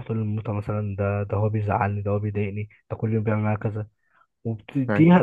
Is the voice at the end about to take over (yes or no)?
no